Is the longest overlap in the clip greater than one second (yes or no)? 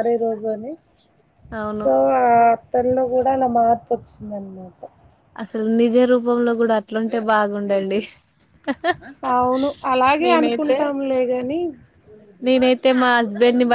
no